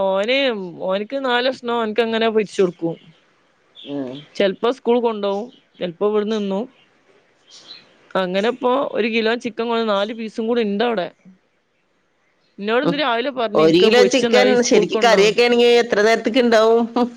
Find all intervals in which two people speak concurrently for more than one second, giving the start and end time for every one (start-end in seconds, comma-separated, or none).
13.6-15.3